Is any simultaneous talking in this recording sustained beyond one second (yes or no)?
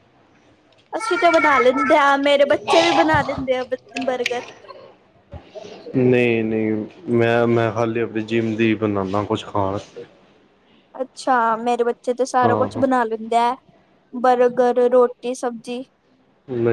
no